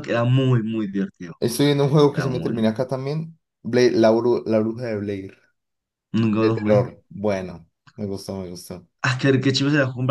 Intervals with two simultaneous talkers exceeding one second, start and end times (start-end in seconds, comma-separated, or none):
none